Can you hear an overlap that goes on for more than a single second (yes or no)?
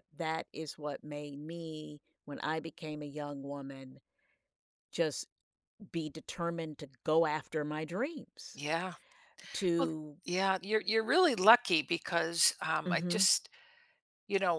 no